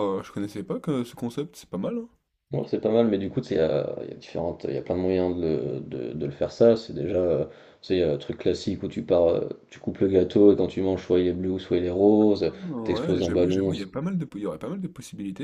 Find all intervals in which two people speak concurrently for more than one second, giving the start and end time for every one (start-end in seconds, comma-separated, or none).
12.5-13.9